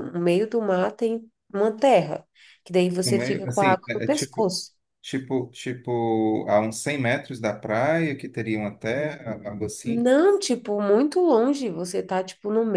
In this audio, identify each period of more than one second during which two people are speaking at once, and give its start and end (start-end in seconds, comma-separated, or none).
3.0-4.5